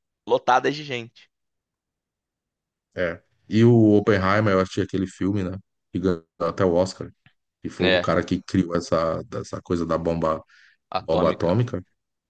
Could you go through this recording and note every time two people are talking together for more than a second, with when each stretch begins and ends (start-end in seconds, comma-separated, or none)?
none